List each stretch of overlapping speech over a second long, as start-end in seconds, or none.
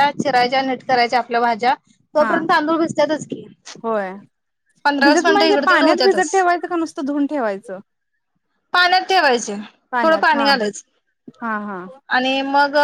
5.0-6.3